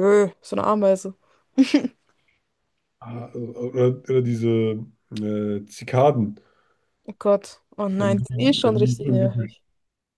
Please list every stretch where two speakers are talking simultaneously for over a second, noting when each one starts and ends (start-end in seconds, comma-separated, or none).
8.0-9.6